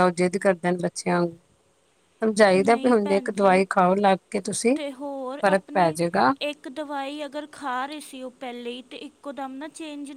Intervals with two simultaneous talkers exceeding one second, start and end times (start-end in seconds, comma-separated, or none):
none